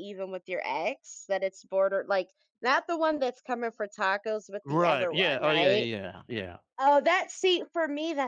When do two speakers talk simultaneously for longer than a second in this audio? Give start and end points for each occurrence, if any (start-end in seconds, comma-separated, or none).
4.7-5.8